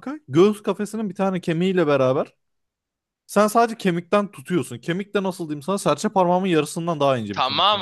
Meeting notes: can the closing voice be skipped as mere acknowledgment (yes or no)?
no